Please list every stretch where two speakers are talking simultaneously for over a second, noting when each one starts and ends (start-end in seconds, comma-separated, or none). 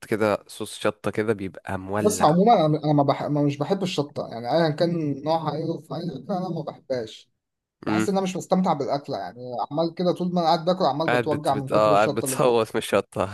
11.1-12.6